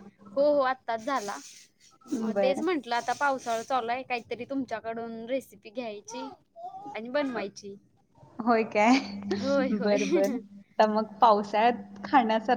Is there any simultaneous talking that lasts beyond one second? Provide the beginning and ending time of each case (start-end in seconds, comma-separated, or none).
none